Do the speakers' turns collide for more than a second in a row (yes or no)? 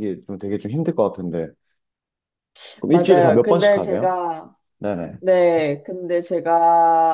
yes